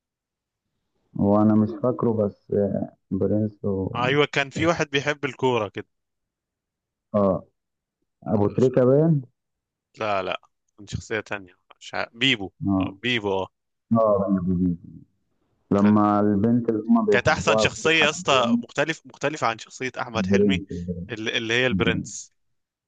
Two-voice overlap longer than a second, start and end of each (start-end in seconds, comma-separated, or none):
17.1-18.6